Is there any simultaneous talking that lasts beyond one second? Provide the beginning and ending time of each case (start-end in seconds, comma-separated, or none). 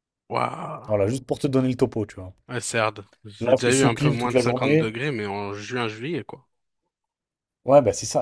3.4-4.9